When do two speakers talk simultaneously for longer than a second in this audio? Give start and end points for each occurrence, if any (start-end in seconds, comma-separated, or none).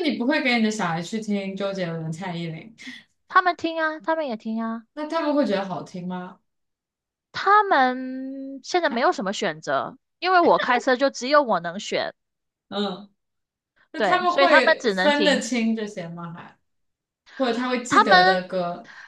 14.0-15.5